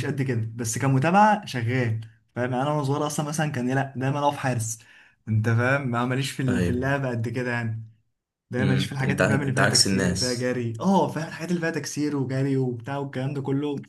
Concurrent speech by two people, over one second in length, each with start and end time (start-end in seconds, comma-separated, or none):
8.6-10.5